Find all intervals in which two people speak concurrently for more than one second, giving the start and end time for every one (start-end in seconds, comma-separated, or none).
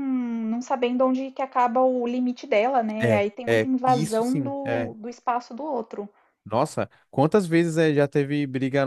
3.0-4.5